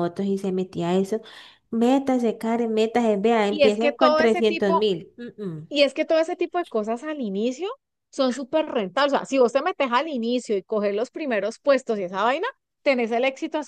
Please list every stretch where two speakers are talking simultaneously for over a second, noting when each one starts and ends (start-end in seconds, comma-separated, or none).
3.5-4.8